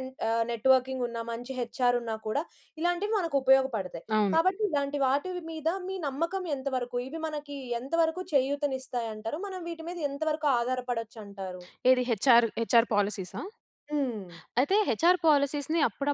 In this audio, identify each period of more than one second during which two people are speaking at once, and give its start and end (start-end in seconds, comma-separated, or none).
none